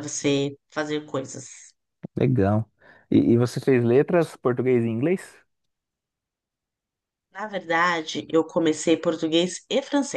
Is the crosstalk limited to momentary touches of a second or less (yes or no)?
yes